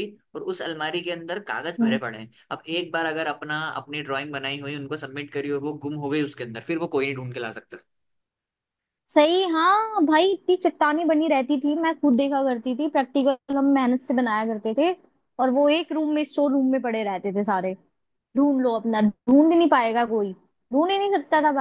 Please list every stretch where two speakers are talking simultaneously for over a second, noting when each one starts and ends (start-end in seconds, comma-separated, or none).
none